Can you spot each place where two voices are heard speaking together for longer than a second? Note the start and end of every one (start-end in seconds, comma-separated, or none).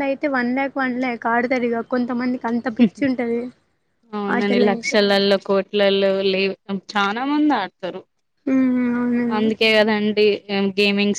none